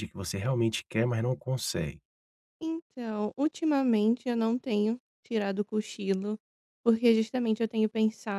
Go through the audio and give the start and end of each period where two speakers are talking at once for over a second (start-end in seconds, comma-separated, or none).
none